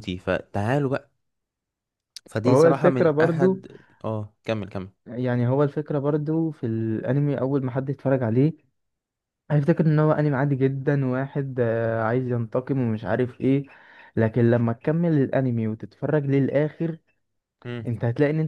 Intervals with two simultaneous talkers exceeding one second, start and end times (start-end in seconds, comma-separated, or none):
2.4-3.6